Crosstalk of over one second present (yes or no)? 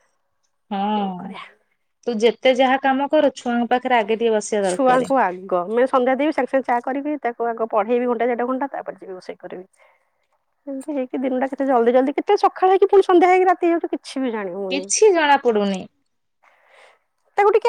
no